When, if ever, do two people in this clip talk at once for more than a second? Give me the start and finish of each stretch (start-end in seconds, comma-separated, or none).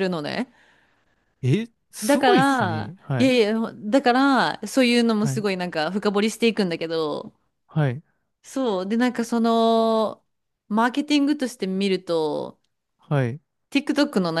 2.0-3.3